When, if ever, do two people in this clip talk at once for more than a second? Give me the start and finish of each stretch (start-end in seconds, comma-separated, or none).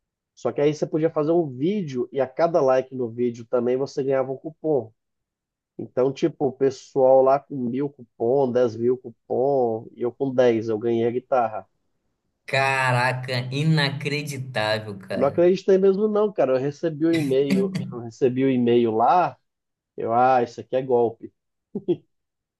none